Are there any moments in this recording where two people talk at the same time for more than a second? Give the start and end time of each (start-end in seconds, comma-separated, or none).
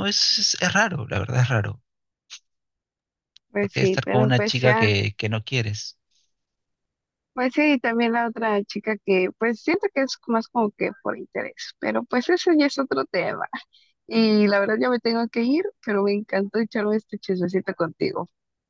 3.6-4.9